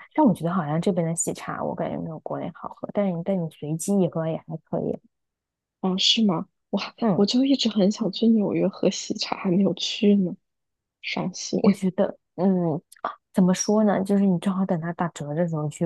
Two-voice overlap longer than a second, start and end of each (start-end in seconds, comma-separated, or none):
none